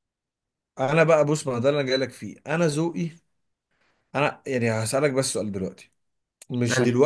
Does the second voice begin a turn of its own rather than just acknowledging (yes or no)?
no